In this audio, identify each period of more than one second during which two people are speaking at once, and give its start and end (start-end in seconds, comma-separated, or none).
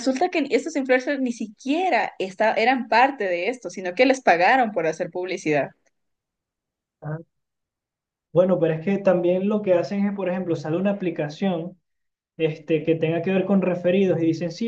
none